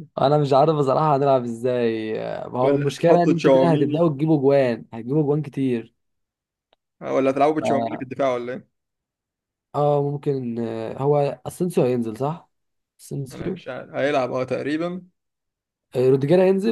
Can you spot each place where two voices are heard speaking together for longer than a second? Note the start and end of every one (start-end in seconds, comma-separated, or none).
2.6-4.1